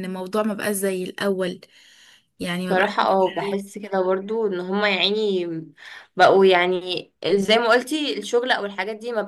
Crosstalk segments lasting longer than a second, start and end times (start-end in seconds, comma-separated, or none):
none